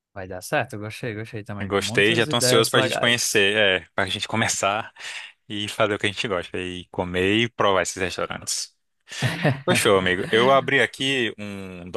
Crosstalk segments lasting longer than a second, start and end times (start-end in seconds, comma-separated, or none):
1.7-3.4